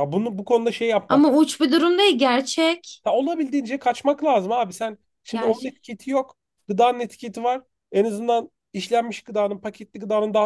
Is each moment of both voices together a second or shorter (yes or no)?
yes